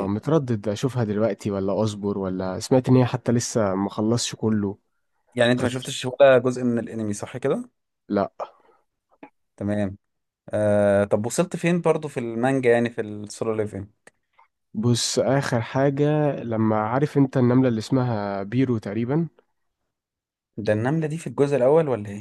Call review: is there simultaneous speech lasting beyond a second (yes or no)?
no